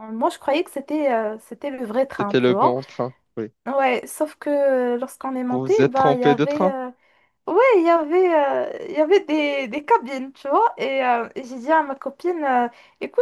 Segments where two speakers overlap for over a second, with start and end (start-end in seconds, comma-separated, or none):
5.5-6.7